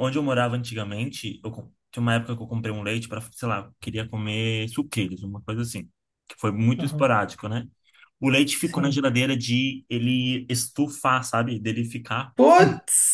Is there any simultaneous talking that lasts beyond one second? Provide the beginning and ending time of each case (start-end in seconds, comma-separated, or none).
none